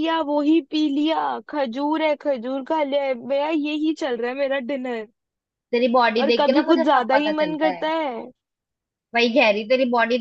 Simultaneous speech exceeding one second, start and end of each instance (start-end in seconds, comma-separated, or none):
6.2-7.8